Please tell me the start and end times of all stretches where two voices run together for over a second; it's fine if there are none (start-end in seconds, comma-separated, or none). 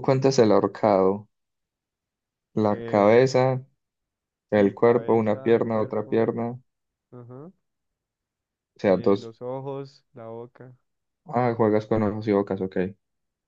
4.5-6.3